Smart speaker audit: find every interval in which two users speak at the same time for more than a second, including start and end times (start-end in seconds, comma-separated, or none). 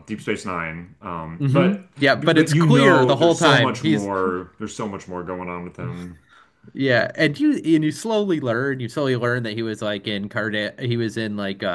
1.4-4.1